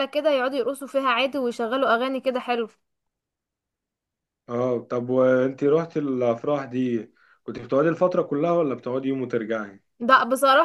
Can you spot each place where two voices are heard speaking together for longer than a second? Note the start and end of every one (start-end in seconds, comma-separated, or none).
none